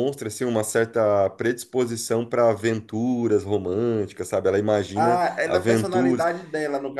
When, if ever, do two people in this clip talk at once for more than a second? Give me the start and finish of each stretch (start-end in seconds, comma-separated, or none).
5.0-6.3